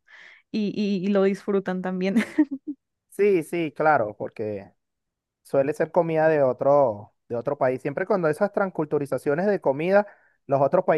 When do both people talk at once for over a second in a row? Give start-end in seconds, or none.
none